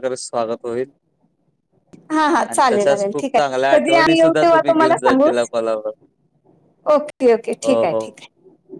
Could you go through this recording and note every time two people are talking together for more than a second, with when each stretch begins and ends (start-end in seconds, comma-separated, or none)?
2.5-5.5